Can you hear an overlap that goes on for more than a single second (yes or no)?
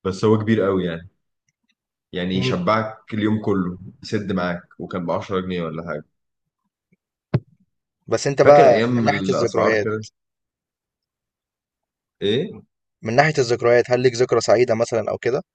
yes